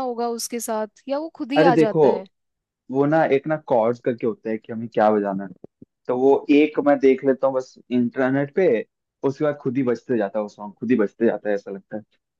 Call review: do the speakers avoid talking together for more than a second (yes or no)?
yes